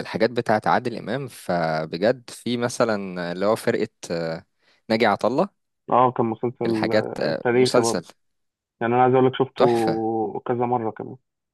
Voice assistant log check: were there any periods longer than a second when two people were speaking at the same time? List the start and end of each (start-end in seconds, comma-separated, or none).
6.7-8.0